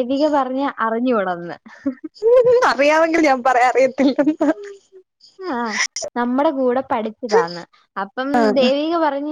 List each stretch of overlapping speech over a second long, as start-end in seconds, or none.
none